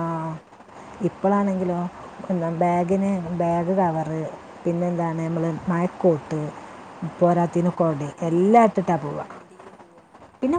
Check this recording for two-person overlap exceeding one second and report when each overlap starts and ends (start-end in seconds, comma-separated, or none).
7.3-9.2